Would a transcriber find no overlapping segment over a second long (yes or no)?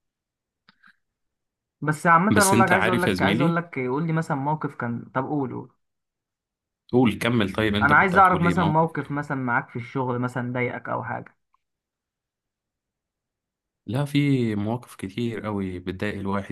no